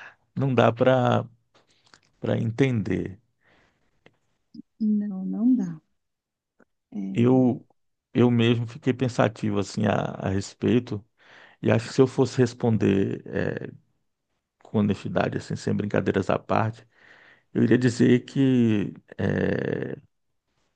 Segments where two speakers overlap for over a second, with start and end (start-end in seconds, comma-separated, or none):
none